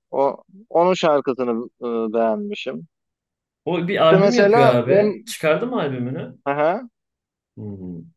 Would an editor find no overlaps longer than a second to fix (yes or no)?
no